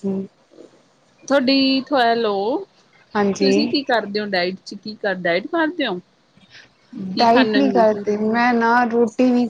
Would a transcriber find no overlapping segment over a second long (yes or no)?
yes